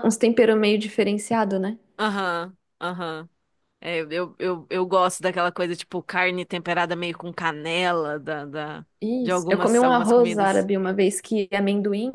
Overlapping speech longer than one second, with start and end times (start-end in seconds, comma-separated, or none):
9.2-10.7